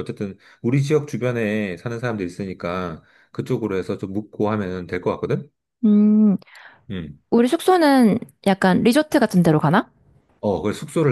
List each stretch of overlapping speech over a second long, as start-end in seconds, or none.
none